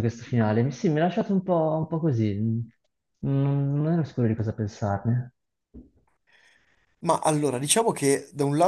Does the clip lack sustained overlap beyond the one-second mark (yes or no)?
yes